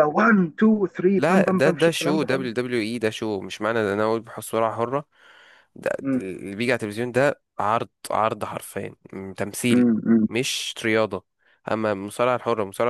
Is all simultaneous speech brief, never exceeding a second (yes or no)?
no